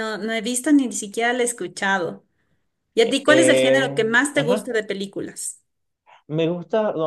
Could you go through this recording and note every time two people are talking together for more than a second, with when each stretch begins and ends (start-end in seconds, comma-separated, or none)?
3.0-4.7